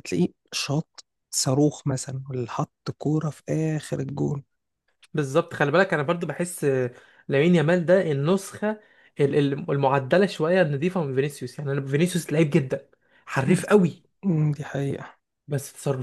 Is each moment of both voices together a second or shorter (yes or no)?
yes